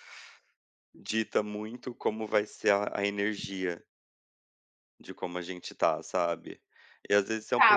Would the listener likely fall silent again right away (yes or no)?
no